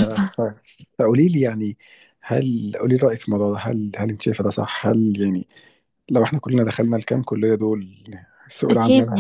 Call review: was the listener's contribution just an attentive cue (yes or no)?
no